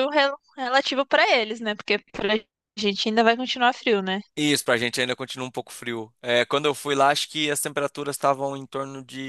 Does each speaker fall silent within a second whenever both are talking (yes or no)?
yes